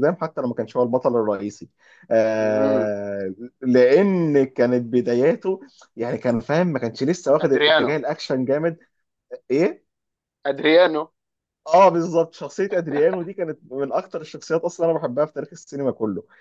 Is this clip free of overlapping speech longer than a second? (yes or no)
yes